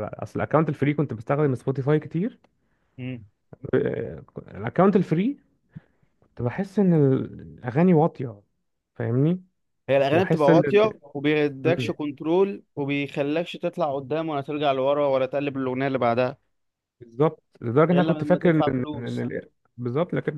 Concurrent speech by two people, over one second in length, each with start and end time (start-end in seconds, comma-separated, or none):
17.9-19.3